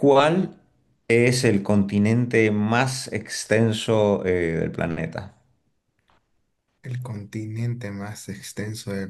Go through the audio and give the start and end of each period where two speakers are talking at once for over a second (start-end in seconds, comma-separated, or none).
none